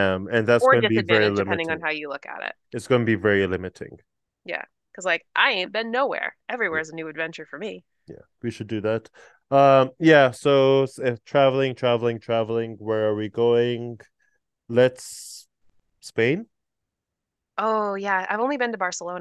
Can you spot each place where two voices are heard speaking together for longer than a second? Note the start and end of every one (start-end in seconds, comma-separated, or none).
0.6-1.8